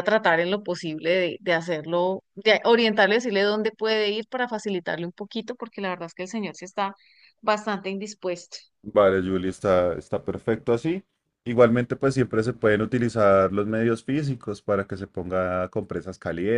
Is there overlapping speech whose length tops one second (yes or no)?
no